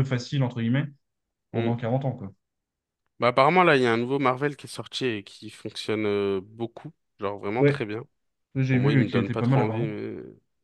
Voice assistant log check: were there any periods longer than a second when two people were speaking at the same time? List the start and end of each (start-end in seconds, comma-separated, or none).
8.7-10.0